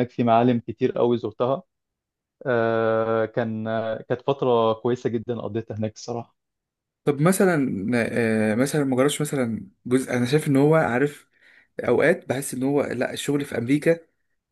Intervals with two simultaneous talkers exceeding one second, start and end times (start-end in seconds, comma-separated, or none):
none